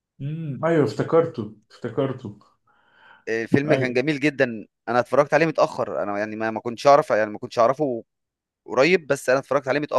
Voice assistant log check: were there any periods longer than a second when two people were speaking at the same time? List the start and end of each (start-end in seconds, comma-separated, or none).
none